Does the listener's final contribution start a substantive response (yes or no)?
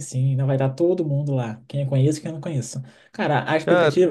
no